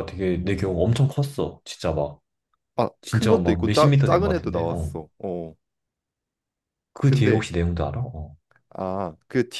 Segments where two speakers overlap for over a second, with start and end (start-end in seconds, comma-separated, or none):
3.0-4.9